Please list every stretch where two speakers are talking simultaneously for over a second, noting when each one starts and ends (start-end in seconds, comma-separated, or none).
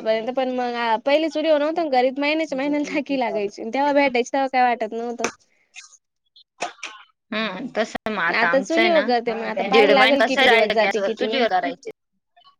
9.6-11.4